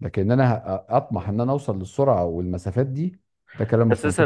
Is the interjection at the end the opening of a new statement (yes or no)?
yes